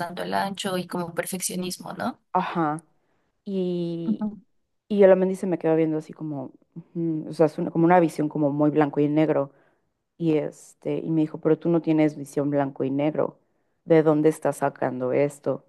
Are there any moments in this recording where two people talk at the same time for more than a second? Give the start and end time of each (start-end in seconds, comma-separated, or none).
none